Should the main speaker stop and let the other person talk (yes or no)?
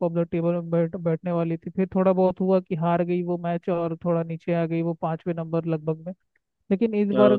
no